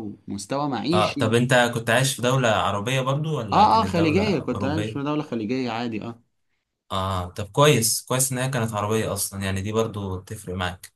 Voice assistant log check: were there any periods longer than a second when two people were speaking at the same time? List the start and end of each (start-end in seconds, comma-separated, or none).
3.5-5.1